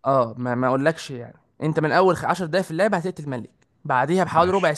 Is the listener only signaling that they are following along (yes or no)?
yes